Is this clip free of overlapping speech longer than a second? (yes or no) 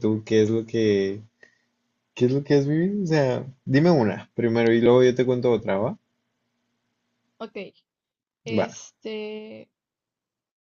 yes